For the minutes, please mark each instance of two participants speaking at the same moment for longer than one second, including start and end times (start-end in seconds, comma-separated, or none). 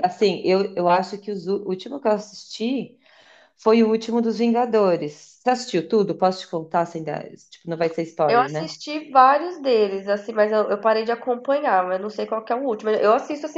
none